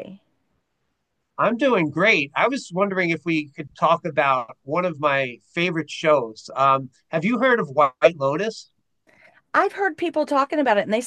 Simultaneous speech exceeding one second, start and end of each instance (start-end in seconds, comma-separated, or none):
none